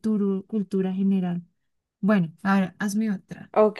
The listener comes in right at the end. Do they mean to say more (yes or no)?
yes